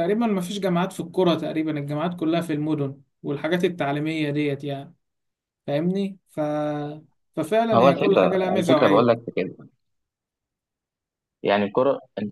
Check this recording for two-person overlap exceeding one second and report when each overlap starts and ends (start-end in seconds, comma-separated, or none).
7.7-9.1